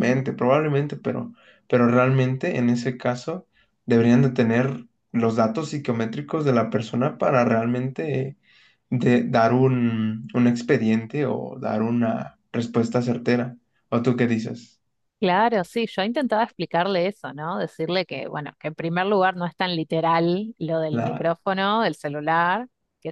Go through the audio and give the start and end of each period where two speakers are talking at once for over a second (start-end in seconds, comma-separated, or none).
none